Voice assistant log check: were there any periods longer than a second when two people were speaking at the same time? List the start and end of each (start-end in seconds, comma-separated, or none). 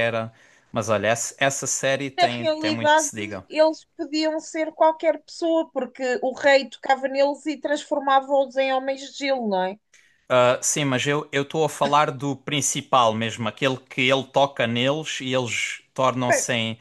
2.2-3.4